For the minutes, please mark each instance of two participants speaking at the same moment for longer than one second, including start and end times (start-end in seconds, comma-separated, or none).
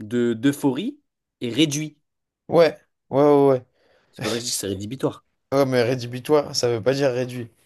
none